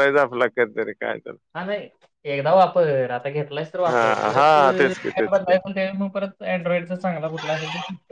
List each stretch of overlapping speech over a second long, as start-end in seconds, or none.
3.9-5.5